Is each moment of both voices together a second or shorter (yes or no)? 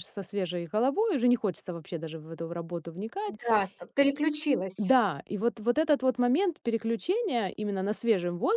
yes